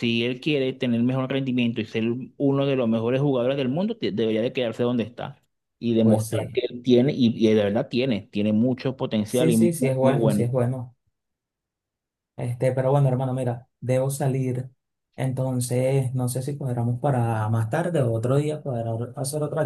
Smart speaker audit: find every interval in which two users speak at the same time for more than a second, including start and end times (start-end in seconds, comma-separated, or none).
9.2-10.5